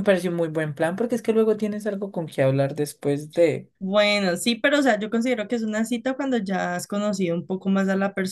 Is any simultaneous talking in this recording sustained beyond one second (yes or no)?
no